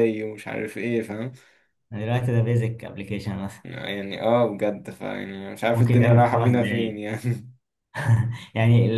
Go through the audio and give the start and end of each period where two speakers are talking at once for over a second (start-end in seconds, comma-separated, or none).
5.7-7.0